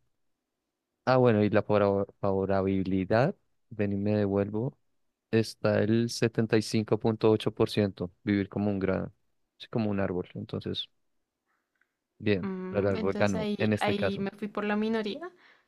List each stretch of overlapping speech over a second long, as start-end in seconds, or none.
12.3-14.3